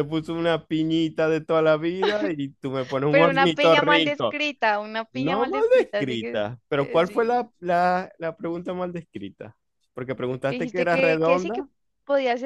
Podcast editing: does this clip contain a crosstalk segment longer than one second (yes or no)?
yes